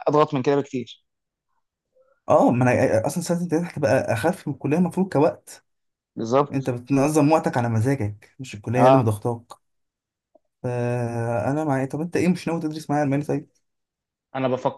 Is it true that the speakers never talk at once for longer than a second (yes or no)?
yes